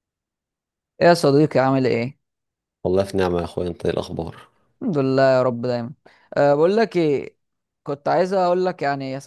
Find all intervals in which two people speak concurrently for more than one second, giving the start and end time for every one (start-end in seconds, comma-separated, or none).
none